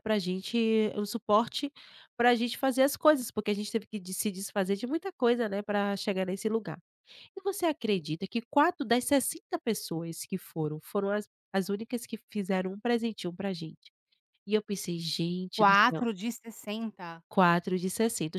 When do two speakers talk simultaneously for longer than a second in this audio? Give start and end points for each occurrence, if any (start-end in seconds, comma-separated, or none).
none